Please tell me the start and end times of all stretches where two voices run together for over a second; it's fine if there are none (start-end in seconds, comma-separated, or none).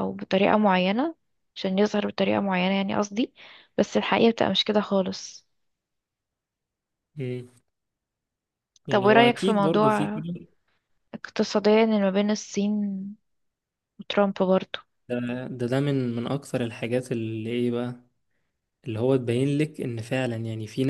8.9-10.2